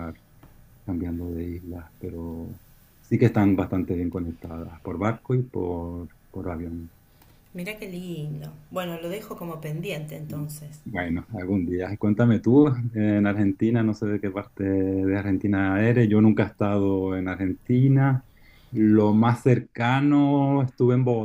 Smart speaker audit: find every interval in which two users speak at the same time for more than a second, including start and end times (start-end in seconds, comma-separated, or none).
none